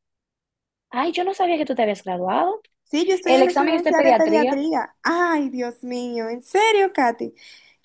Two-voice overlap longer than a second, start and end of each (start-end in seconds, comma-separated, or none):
3.2-4.6